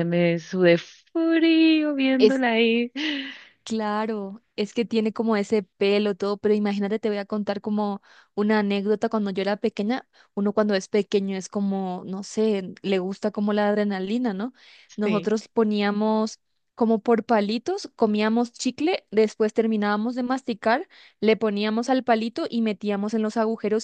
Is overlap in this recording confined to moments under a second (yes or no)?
yes